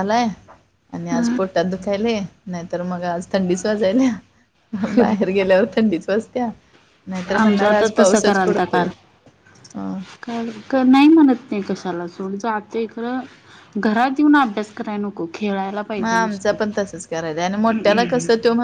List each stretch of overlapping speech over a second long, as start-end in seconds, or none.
7.4-8.9